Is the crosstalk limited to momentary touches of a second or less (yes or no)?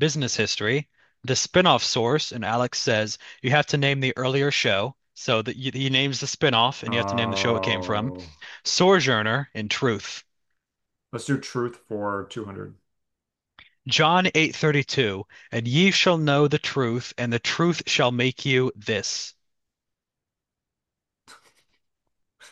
no